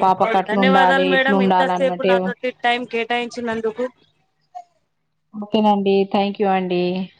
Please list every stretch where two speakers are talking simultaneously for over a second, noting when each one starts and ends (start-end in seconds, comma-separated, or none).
0.5-2.1